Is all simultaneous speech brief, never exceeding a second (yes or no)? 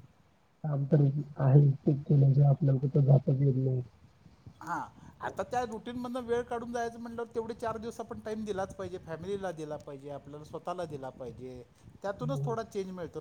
yes